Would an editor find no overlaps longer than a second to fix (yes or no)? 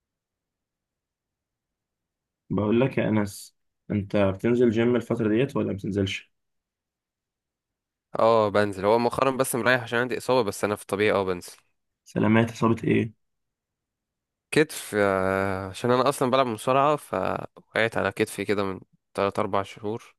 yes